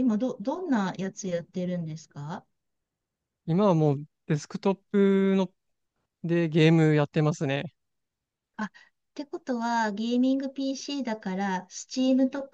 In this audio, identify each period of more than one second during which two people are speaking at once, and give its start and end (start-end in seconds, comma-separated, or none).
none